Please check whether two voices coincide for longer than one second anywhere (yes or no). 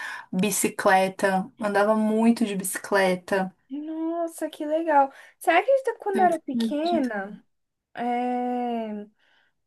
yes